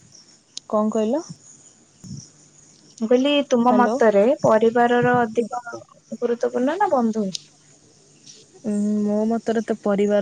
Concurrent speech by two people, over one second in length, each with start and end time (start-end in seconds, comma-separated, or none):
none